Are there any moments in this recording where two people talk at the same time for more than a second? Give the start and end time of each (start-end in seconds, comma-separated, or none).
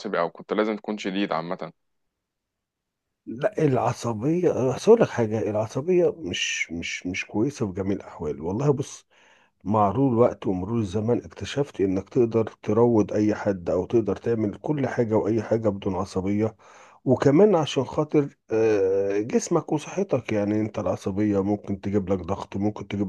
none